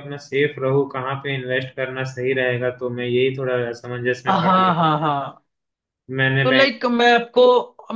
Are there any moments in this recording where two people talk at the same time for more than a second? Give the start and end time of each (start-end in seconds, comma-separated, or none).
none